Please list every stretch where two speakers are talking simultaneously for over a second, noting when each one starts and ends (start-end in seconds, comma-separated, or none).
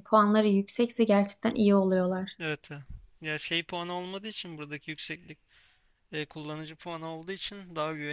none